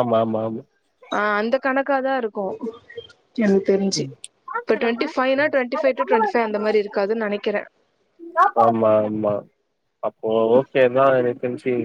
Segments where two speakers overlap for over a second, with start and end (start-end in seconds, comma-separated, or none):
none